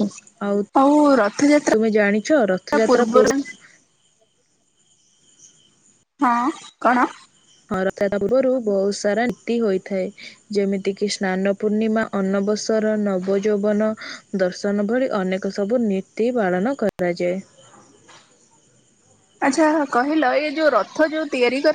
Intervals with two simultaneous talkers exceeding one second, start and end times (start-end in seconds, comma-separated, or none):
1.7-3.4